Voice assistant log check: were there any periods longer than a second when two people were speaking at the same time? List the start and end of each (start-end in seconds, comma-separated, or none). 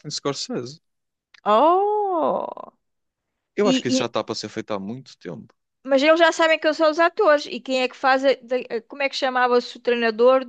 none